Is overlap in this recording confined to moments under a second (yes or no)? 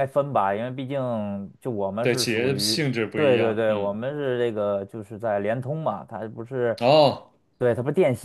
no